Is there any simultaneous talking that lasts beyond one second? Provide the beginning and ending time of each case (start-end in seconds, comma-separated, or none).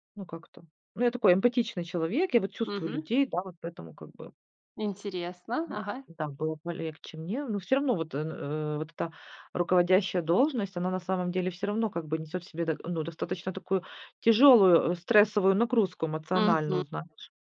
none